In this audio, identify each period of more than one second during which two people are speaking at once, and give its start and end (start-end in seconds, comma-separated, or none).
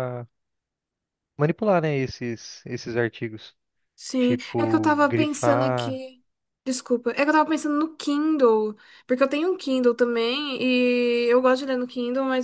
4.2-6.0